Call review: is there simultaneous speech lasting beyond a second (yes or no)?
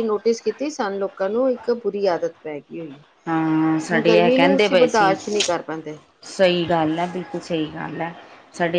yes